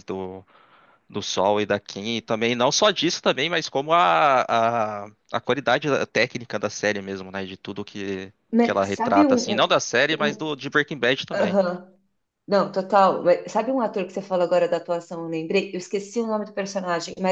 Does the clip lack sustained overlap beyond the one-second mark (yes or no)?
no